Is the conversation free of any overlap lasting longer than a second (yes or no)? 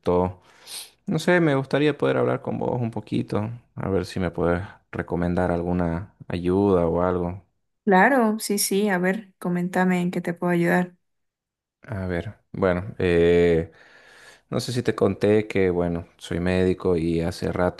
yes